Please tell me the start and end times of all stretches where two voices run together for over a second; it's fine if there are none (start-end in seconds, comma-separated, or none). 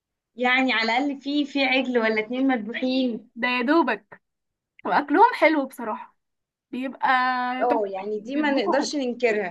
7.6-8.9